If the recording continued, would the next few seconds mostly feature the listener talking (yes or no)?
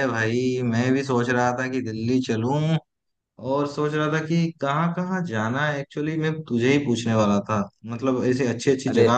no